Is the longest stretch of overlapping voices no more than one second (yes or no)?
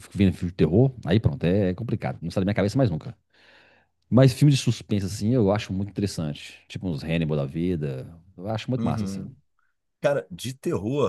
yes